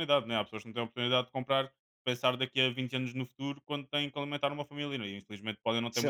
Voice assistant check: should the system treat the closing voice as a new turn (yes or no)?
yes